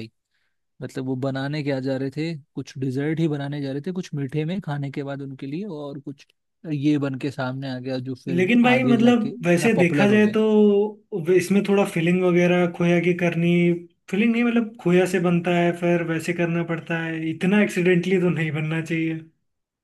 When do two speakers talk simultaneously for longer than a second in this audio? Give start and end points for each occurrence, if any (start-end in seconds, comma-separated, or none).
8.3-10.4